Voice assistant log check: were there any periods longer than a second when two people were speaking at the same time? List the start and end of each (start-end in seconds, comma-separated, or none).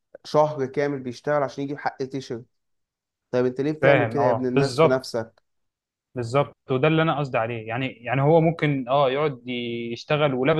3.8-5.1